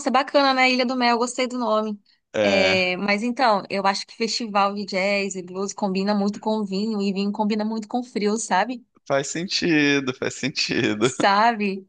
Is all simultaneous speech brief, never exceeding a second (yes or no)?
yes